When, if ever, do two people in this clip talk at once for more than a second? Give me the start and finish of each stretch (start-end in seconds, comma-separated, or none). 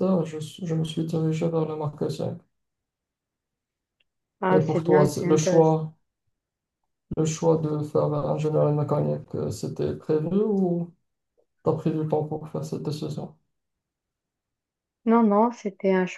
4.5-5.8